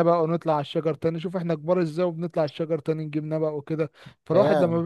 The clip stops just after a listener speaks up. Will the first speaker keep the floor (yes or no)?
yes